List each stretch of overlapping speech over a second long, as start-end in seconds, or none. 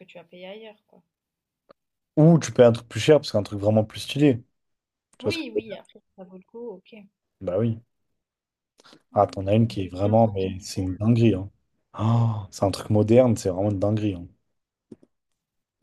9.1-10.9